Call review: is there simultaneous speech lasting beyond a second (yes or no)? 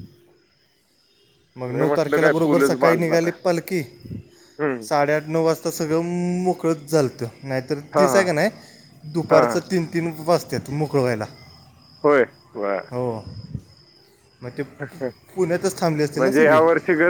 yes